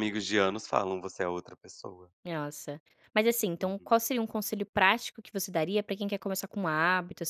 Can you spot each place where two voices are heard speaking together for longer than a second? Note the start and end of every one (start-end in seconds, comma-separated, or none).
none